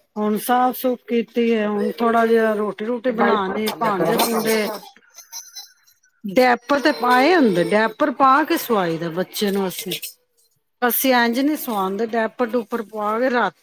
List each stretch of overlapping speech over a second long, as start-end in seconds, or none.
3.1-4.7